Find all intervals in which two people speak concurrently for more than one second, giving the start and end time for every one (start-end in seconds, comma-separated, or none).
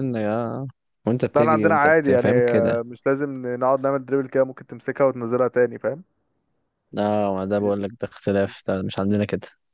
1.2-2.8